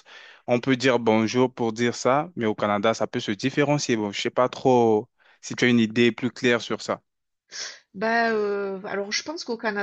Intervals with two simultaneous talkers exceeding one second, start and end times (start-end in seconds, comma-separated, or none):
none